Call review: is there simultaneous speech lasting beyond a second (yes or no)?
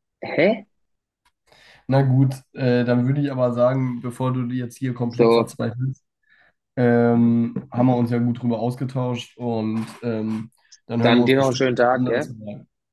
yes